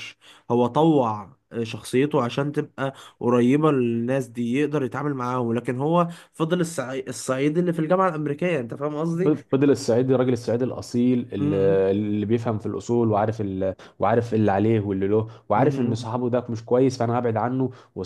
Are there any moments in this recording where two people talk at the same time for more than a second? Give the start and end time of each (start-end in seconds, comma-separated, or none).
none